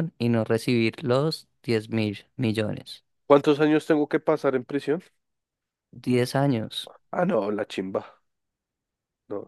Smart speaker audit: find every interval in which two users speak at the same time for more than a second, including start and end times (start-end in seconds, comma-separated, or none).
none